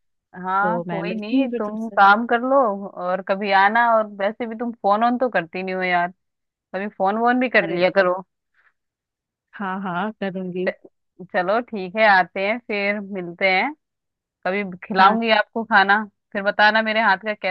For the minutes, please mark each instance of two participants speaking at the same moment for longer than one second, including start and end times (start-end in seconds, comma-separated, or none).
0.6-2.0